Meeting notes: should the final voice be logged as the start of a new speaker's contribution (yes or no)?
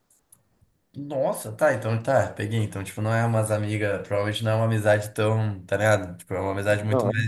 no